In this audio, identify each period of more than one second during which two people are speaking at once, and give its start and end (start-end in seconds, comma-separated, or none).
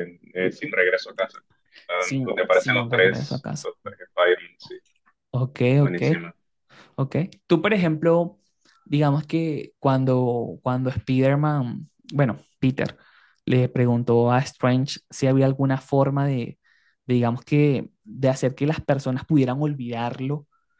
2.0-3.7